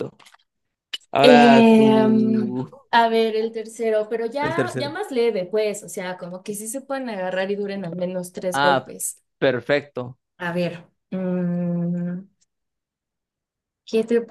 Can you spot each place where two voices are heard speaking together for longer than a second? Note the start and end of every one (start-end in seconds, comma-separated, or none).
1.2-2.5